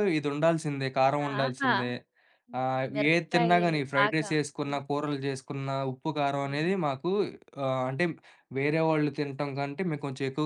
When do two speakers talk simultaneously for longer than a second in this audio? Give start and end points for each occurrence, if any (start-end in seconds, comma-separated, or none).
2.6-4.8